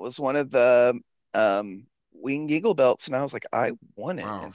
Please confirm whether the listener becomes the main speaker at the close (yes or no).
yes